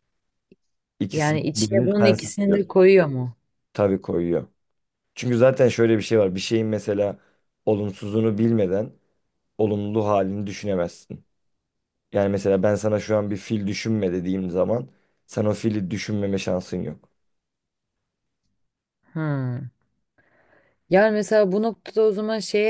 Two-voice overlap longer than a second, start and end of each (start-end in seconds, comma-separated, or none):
1.1-2.7